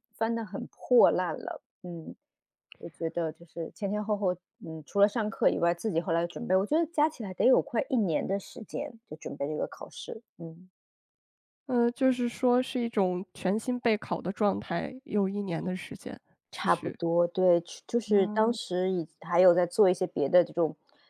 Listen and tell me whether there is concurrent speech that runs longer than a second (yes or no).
no